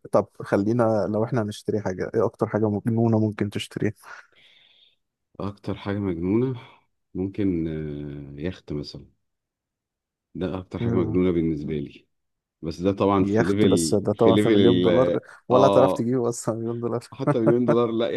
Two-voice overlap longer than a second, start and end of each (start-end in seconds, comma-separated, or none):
13.2-16.1